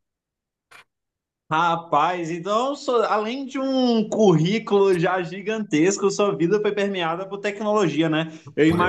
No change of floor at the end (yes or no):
yes